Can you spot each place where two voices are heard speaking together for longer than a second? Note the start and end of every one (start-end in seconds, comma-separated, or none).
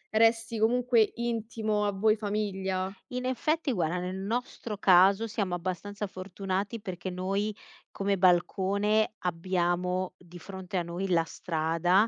none